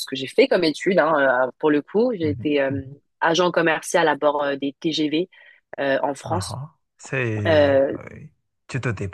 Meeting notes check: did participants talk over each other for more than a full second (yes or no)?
no